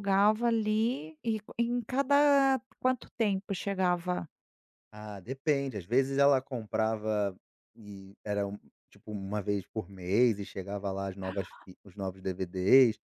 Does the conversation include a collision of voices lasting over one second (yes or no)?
no